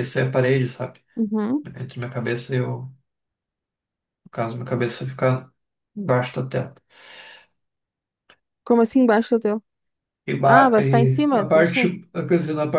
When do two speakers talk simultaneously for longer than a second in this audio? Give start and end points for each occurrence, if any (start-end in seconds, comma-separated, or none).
10.4-11.9